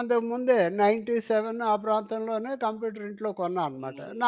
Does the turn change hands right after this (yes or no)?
yes